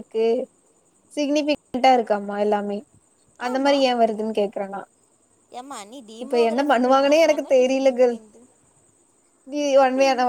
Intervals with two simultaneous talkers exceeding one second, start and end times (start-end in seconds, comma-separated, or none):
6.2-8.2